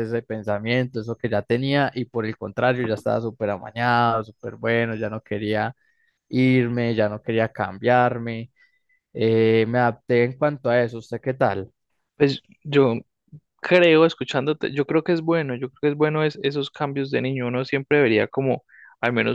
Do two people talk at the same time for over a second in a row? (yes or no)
no